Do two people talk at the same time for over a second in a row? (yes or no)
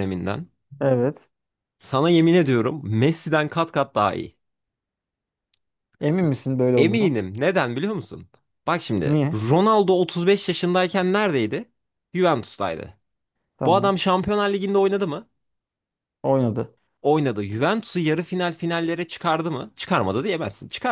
no